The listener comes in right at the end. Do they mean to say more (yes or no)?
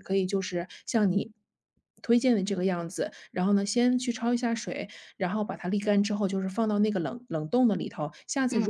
no